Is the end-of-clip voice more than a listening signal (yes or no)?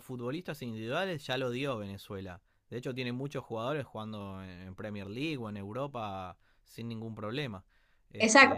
yes